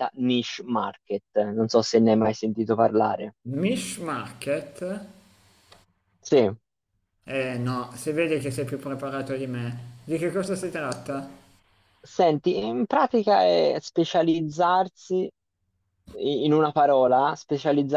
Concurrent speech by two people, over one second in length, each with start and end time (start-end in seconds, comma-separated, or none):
none